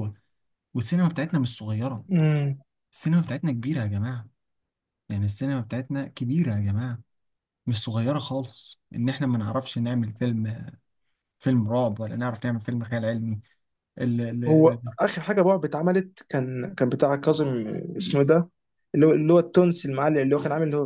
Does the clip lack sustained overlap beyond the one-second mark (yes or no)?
yes